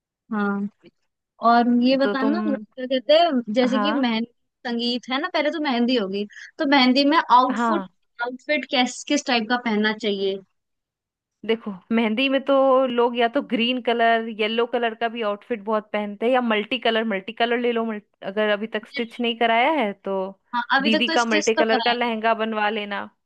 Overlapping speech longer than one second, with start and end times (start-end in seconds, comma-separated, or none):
20.8-22.1